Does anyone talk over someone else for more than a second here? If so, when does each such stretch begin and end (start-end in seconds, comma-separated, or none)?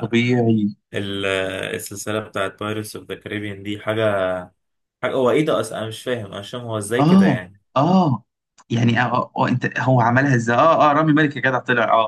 none